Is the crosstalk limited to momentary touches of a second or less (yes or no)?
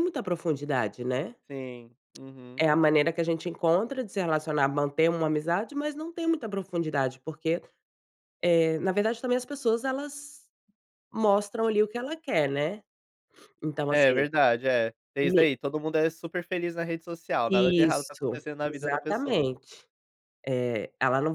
no